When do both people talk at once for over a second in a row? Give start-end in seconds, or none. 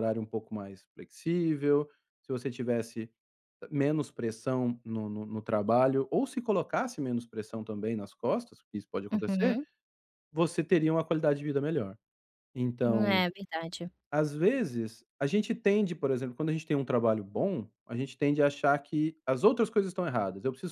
none